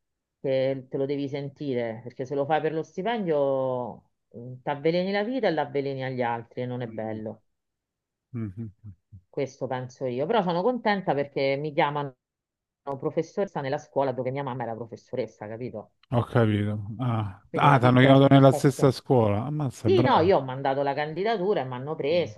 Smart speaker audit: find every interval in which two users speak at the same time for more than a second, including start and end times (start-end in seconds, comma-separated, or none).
17.5-19.0